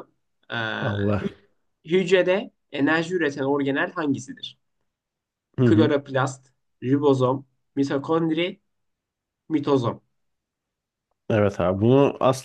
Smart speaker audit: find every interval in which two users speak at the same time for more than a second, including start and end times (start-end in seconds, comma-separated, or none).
none